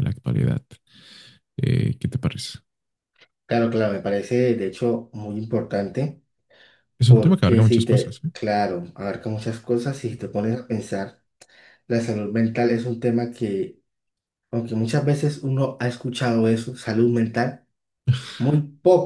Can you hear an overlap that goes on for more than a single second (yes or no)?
yes